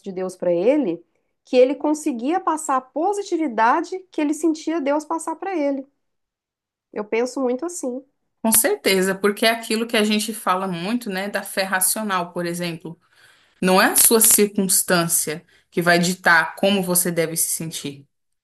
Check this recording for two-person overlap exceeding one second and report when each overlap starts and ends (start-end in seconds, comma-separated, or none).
none